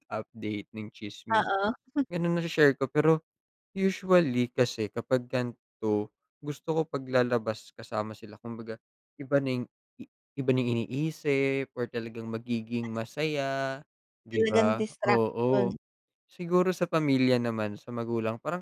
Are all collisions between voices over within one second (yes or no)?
no